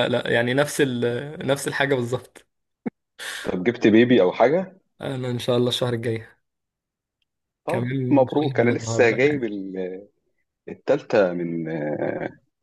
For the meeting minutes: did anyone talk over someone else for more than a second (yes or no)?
yes